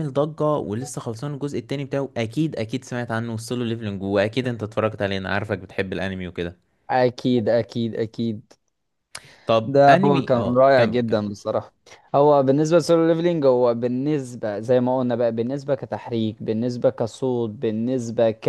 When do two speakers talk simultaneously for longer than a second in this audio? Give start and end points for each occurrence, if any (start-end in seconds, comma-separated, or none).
9.7-11.2